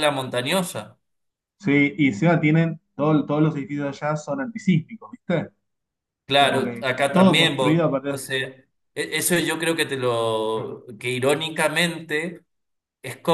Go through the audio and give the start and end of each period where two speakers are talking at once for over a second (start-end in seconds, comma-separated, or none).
6.3-8.2